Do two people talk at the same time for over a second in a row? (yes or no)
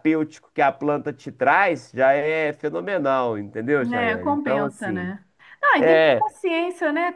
yes